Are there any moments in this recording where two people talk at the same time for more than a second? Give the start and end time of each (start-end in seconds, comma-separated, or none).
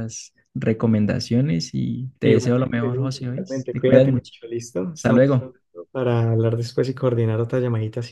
2.2-4.3